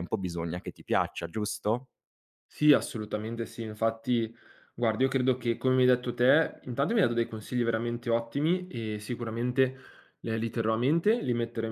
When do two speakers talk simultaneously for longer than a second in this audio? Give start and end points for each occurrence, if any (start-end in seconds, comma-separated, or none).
none